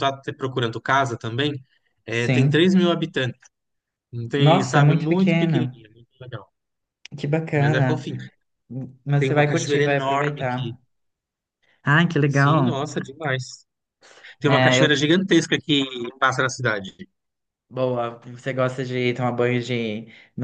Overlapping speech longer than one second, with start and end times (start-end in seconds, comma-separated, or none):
4.4-5.8, 9.2-10.8